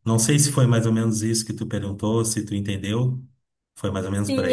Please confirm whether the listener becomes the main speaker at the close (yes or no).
yes